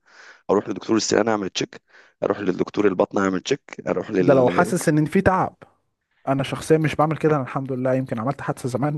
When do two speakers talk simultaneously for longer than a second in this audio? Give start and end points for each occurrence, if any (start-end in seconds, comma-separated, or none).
none